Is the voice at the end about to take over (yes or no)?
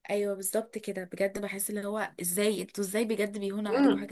yes